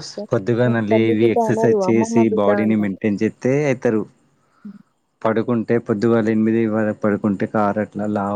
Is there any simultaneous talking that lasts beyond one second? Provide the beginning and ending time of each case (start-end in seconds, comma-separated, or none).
0.7-3.0